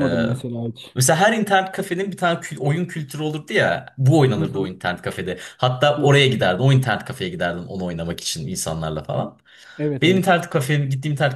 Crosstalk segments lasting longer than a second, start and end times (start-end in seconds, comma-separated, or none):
none